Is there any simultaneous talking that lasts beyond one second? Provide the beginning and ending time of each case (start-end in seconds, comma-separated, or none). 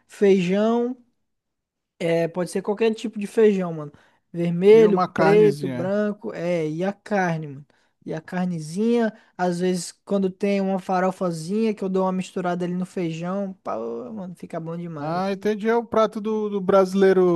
4.7-5.9